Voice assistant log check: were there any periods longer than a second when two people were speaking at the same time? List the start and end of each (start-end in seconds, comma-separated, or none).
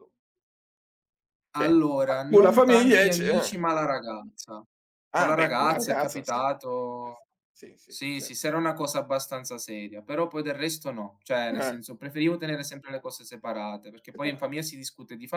1.6-3.6, 5.1-6.5